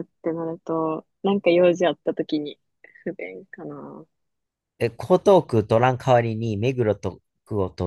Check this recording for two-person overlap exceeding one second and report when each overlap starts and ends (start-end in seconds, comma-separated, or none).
none